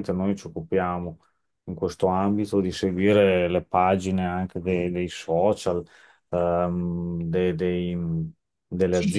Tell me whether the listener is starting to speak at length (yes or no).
yes